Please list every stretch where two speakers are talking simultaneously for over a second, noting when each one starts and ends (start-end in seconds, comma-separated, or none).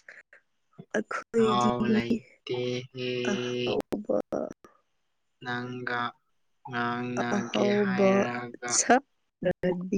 none